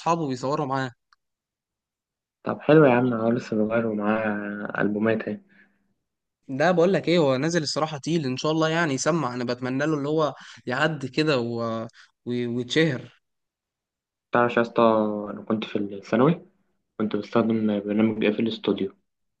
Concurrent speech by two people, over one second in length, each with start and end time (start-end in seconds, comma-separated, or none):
none